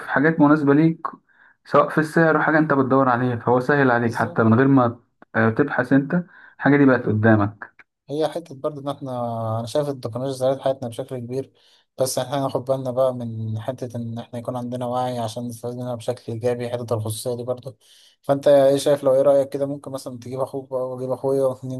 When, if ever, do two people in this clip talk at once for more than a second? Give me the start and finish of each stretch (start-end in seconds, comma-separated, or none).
none